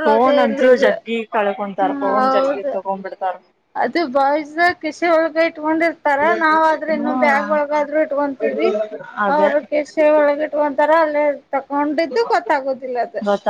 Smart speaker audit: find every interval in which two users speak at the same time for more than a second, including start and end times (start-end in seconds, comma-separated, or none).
none